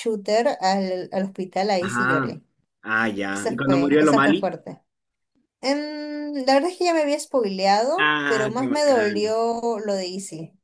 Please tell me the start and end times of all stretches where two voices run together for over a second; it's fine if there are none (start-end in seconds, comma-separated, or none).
3.3-4.5, 8.0-9.4